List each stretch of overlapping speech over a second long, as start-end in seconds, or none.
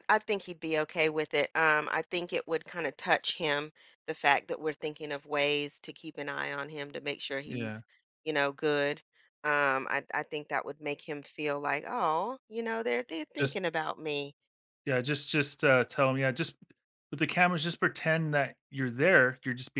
none